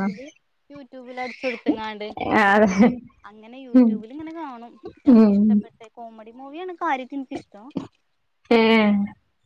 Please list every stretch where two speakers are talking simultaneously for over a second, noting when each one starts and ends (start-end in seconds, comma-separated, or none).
none